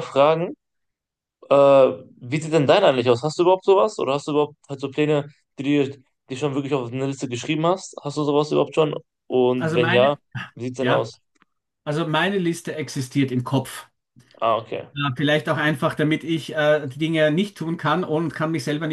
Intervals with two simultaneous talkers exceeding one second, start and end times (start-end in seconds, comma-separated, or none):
none